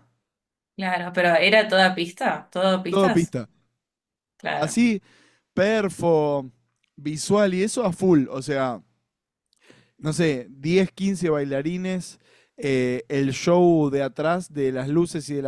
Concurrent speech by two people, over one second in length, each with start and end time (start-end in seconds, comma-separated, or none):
none